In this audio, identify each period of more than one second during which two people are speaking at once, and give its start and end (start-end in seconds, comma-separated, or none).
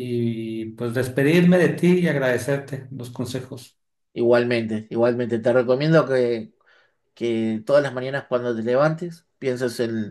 none